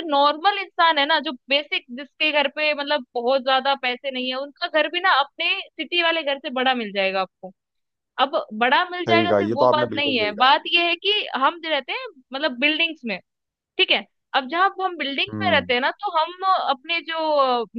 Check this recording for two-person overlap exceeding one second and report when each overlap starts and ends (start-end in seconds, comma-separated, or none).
9.1-10.6